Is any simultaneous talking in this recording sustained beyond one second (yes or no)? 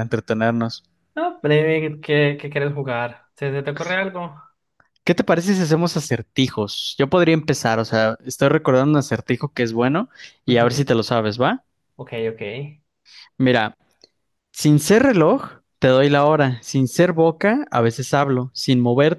no